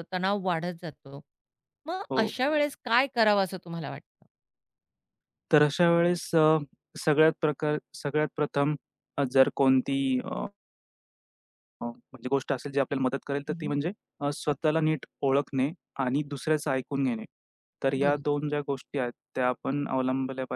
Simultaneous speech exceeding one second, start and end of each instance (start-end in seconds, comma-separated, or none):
none